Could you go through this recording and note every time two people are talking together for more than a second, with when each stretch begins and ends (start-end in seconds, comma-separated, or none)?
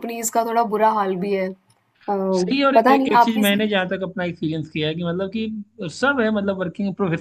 2.4-3.6